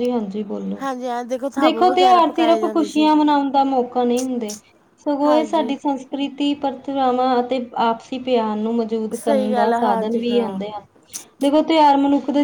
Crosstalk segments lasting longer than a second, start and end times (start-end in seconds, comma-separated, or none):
1.6-3.1, 9.1-10.6